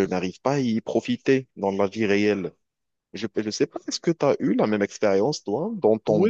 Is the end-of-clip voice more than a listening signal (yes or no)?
yes